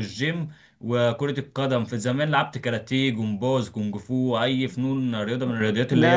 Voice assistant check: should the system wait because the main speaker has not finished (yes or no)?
no